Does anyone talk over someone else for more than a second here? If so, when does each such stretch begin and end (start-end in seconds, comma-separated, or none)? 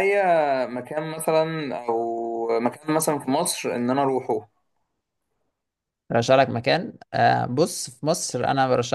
none